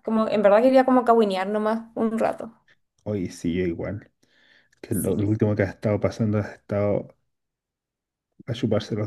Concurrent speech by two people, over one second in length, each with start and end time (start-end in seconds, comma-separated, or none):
none